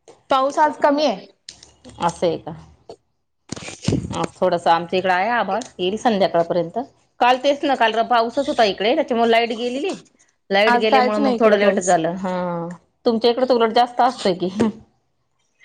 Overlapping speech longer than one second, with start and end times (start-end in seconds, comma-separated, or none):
10.7-11.9